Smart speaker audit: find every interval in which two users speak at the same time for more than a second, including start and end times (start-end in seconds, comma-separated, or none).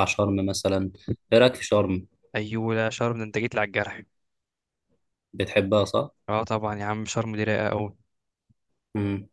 none